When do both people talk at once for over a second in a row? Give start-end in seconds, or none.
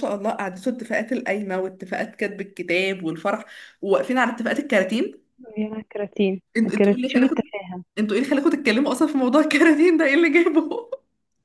none